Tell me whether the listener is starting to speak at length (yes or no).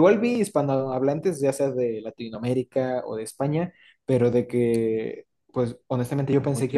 no